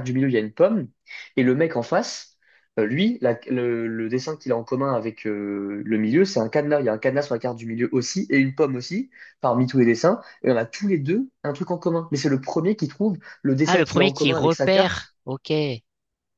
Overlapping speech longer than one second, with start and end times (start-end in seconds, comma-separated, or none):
13.7-15.2